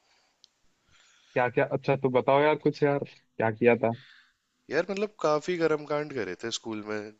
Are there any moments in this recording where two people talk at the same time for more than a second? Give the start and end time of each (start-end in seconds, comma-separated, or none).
none